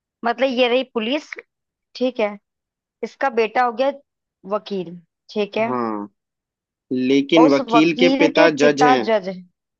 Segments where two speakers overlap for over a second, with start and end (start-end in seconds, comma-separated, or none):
7.4-9.1